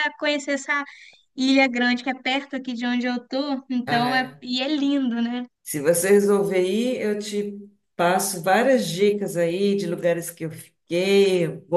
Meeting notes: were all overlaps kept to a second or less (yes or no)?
yes